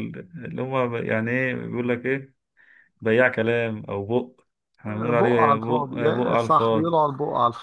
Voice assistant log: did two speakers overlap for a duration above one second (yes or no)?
yes